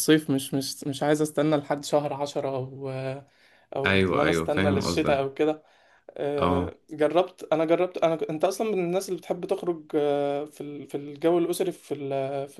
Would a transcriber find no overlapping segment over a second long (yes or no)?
no